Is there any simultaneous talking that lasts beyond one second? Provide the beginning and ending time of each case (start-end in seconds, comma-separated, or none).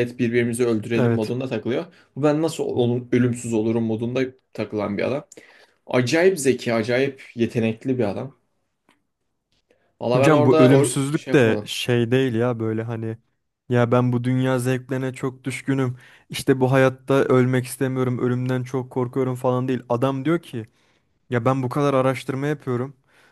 10.1-11.7